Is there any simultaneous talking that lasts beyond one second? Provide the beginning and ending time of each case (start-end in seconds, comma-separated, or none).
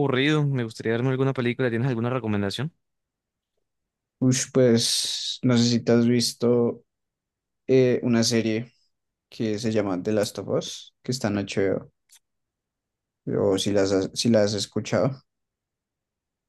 none